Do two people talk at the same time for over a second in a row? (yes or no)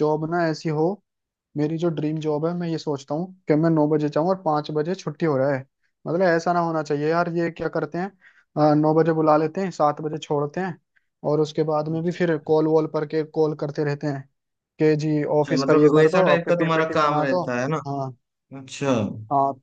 yes